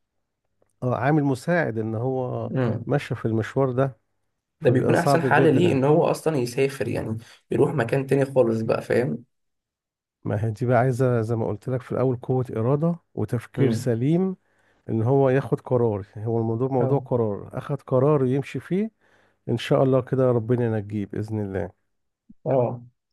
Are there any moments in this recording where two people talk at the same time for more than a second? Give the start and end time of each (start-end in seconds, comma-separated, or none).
4.6-5.9